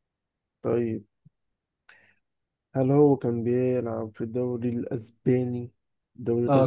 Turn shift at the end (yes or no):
yes